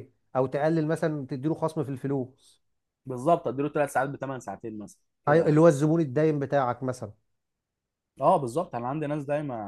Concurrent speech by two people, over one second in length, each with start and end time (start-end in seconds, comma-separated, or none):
none